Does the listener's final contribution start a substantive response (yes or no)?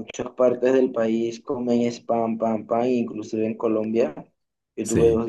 no